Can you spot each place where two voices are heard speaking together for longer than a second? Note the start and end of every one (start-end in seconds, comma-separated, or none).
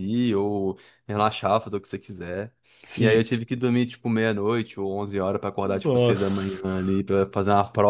5.8-7.0